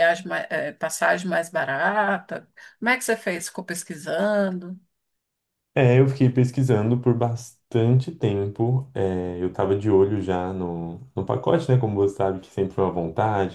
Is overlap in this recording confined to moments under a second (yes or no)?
yes